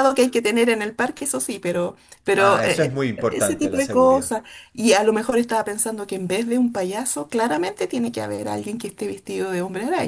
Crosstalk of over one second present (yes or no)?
yes